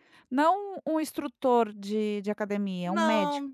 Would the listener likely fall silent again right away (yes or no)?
no